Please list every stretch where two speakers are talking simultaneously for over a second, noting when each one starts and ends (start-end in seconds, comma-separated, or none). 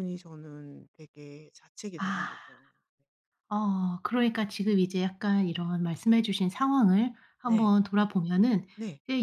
none